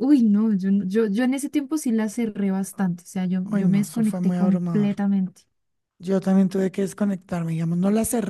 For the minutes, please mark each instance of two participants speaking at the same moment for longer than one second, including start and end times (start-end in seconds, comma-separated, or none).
3.5-4.9